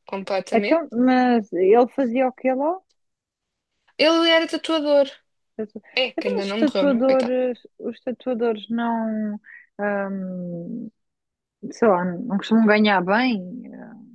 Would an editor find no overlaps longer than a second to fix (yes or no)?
no